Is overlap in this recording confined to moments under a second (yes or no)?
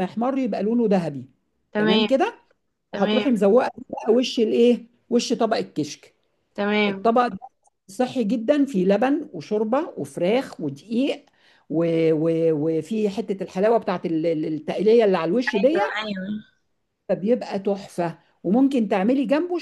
yes